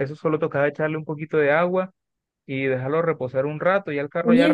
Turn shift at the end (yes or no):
yes